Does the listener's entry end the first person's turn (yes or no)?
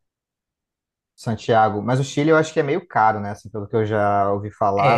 yes